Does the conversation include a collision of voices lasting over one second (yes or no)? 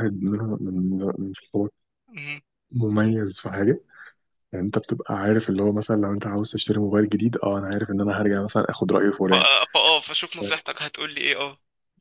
no